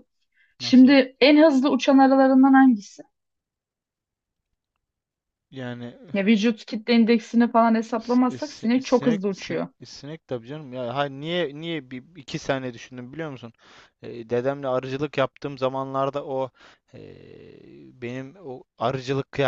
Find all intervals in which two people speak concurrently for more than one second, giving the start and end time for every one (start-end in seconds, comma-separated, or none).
8.0-9.7